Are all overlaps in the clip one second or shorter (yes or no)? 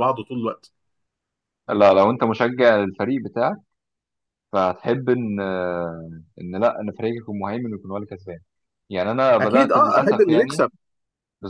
no